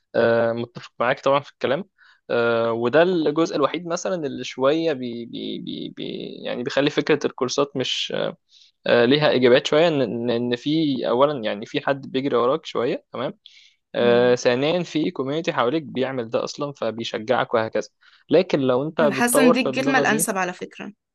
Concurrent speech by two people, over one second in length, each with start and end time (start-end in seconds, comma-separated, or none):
19.0-20.3